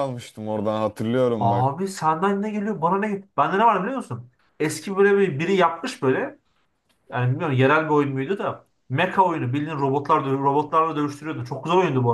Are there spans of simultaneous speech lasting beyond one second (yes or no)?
no